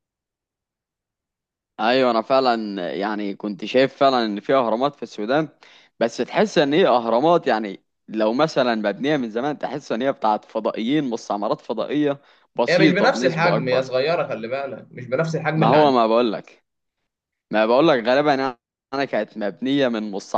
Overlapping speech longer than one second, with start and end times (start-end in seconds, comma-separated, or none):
12.7-13.9